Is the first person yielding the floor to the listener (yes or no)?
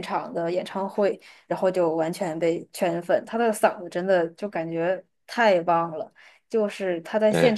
no